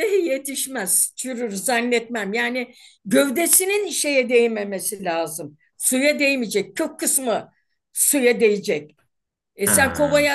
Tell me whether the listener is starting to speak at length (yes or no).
no